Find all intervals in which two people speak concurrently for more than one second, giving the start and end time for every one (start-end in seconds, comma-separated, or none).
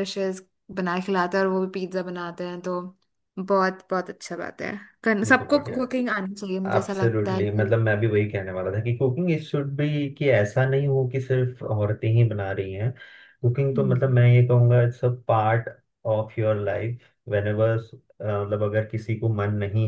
6.4-7.7